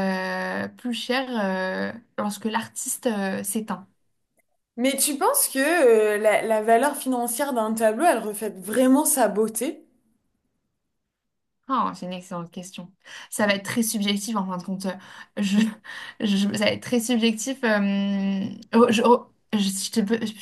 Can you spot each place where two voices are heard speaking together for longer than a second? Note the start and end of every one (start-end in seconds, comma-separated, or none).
none